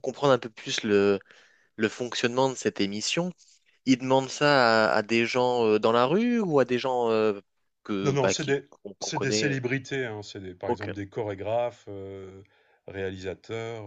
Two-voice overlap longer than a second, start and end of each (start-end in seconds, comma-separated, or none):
8.0-9.6